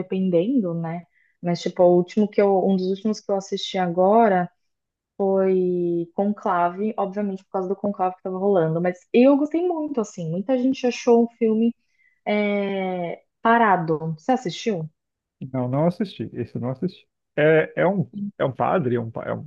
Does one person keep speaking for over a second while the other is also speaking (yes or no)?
no